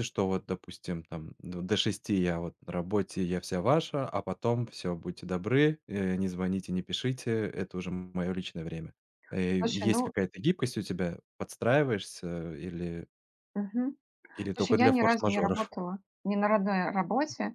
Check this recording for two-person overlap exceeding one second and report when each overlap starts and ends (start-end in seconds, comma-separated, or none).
14.5-15.7